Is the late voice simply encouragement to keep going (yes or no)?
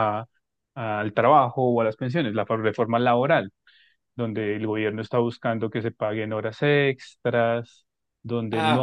no